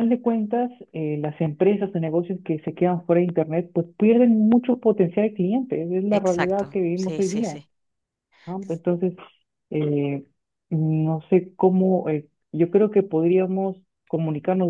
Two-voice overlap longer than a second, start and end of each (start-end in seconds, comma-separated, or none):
6.1-7.6